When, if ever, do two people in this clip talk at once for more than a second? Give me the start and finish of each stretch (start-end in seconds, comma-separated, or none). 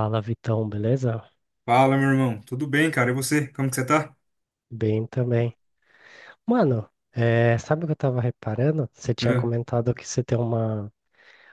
none